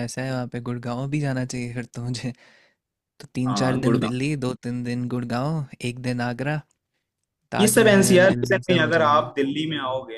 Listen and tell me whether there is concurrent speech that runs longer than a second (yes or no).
yes